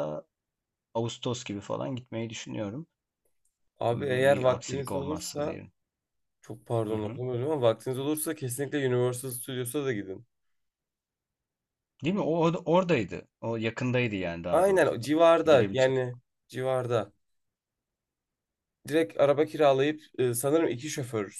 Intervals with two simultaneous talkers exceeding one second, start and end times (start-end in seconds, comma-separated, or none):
3.9-5.6, 14.5-16.0